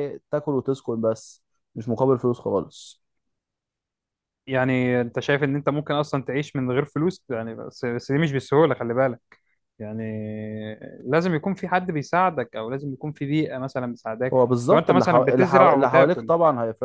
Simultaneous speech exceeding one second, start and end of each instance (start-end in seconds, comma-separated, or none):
14.3-16.3